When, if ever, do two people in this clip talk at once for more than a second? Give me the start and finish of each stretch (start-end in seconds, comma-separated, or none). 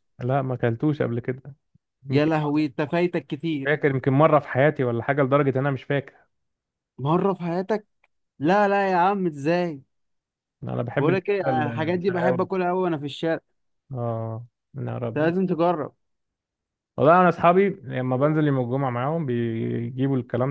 11.0-12.5